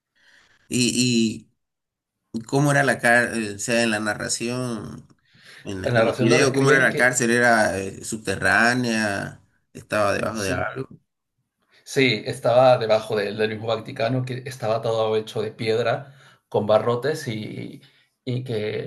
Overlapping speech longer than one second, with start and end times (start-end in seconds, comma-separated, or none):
5.8-7.1